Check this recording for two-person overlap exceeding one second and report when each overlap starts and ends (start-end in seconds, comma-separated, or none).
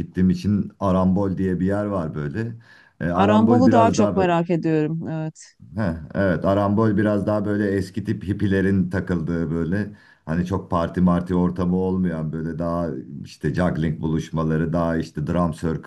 3.1-4.4